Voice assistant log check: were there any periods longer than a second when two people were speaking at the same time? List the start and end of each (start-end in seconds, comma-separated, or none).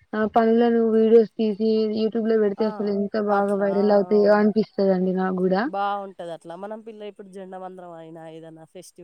none